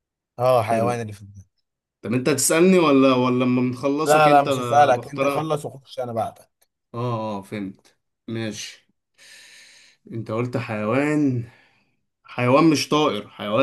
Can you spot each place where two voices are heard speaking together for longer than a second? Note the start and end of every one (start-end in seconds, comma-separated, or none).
4.1-5.5